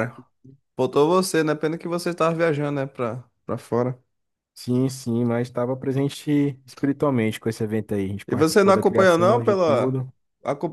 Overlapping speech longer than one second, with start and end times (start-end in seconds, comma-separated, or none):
8.3-10.0